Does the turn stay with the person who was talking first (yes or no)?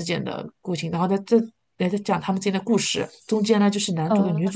yes